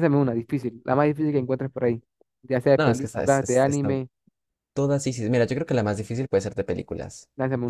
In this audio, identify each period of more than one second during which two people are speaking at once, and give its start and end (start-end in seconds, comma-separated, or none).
2.8-4.0